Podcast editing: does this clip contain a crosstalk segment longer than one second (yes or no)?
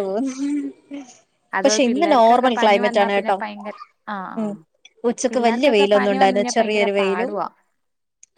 yes